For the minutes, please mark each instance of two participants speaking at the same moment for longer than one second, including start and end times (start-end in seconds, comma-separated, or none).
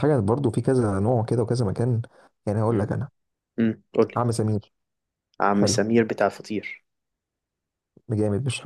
none